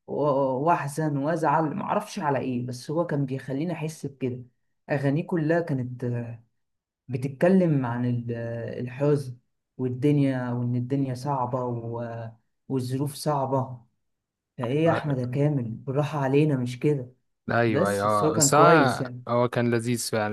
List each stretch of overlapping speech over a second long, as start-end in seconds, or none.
17.7-19.2